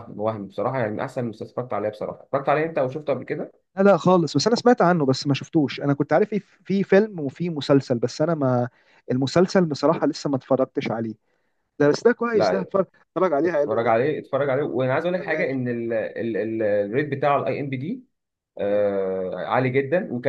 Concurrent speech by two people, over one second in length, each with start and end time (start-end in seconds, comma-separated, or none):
none